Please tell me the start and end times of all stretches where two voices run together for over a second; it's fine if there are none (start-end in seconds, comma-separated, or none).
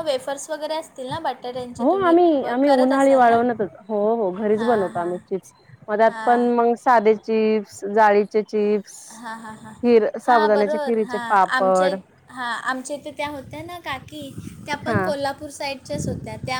10.3-11.9